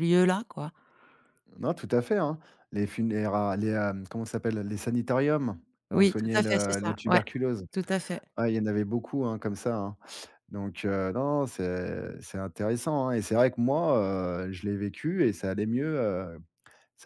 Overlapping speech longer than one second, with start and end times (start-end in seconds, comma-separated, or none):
5.9-7.2